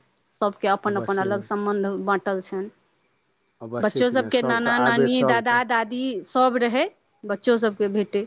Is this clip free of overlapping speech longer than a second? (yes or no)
no